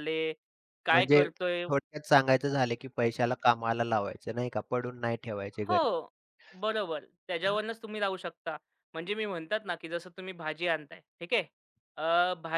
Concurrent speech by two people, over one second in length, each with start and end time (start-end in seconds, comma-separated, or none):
none